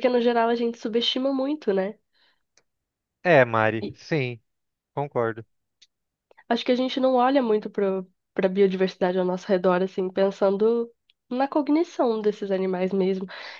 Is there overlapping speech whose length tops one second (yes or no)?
no